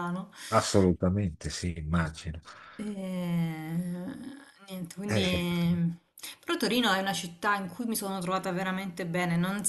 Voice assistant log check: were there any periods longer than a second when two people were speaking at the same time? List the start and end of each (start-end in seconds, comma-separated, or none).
none